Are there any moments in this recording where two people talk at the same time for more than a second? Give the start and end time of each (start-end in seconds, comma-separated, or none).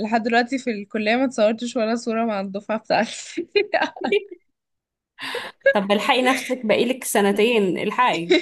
none